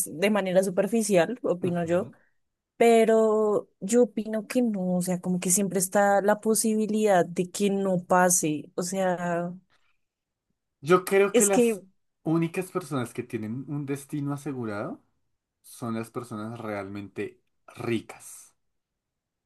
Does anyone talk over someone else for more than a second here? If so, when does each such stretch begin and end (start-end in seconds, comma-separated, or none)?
none